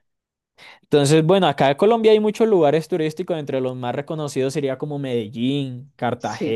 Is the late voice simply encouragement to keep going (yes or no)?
yes